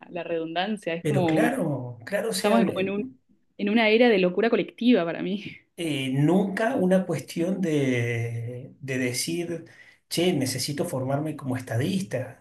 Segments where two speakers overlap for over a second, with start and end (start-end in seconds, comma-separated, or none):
none